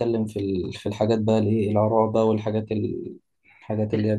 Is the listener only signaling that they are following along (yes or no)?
yes